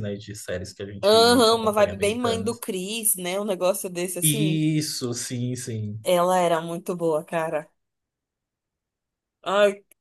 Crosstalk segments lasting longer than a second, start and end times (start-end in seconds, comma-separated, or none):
1.0-2.6